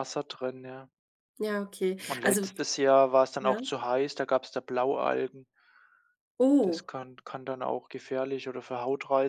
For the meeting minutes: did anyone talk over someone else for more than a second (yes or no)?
no